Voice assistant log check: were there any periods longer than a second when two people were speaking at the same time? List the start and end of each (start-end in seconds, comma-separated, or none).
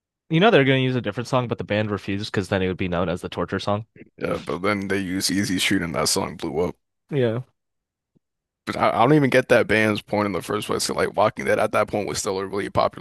none